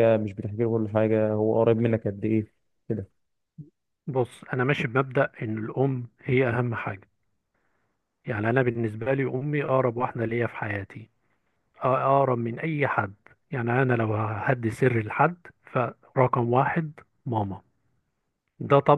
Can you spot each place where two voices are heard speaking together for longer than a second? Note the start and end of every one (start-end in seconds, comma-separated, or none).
none